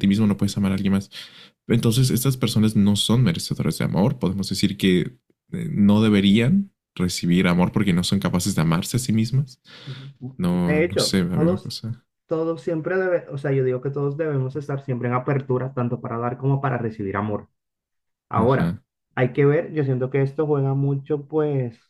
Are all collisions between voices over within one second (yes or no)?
no